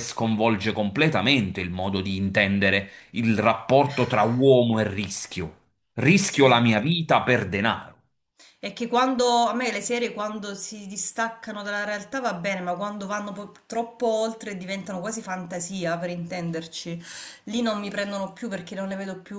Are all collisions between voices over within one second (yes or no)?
yes